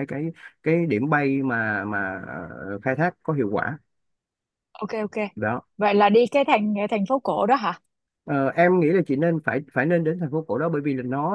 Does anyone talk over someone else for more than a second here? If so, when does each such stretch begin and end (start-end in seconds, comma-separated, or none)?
none